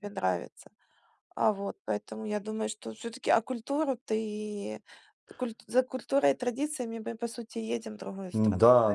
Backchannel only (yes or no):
no